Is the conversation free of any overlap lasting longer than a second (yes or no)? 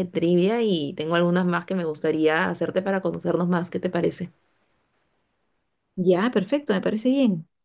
yes